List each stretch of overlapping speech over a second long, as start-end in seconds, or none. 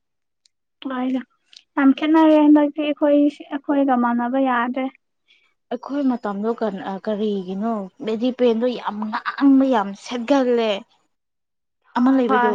none